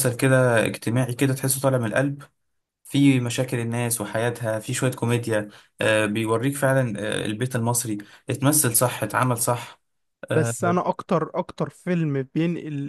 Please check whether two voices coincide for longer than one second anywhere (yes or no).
no